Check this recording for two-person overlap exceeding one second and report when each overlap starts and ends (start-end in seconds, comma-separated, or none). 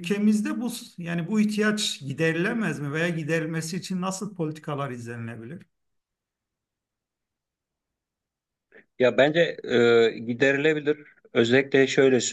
none